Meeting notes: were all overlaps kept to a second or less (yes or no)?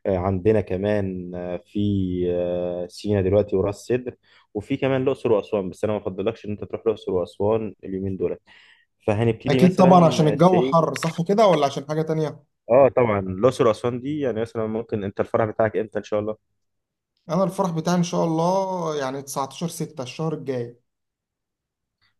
no